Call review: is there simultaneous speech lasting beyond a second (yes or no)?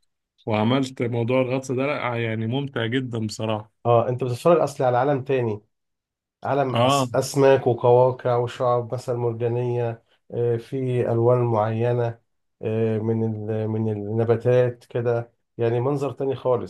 no